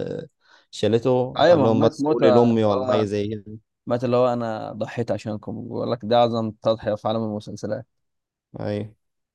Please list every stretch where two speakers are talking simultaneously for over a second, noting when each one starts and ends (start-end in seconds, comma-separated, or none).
1.4-3.1